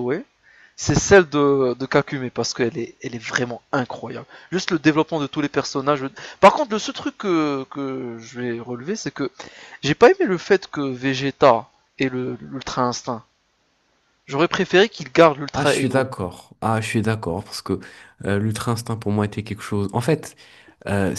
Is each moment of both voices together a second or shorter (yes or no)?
yes